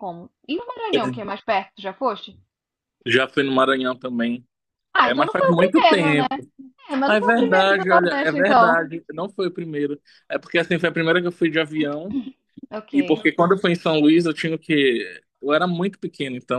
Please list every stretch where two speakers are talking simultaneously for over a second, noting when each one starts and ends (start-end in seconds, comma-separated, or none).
5.0-6.2, 7.0-8.8